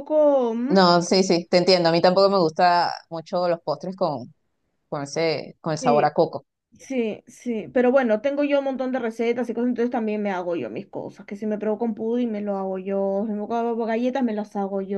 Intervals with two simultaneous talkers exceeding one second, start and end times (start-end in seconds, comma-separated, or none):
none